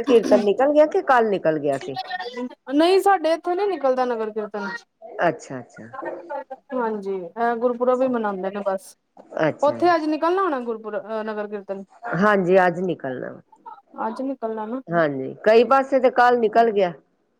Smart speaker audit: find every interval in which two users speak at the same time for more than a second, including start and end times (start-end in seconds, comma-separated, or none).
none